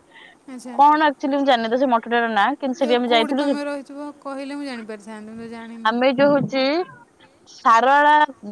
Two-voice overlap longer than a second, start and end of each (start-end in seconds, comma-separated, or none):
2.8-4.8